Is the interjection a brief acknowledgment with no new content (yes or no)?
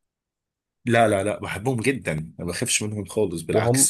no